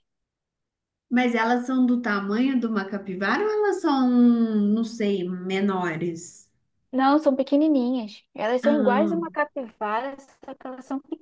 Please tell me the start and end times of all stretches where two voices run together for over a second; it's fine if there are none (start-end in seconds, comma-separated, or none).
none